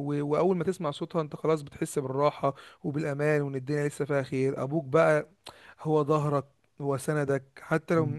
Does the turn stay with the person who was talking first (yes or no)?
yes